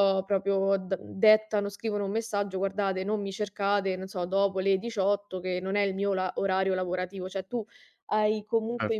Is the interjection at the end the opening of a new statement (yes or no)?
no